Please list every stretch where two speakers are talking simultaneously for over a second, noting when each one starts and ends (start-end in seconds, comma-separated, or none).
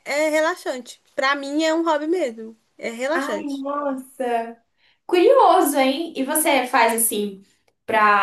none